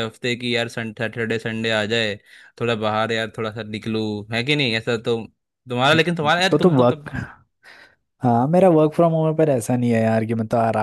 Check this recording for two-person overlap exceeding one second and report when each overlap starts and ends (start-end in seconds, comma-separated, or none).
none